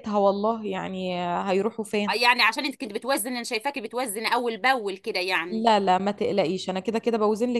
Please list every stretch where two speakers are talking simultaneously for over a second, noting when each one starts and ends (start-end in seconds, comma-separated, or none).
none